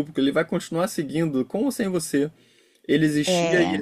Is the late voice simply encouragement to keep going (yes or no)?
yes